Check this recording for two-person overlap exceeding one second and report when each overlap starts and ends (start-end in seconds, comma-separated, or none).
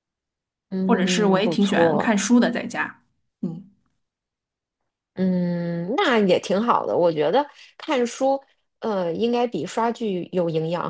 0.9-2.1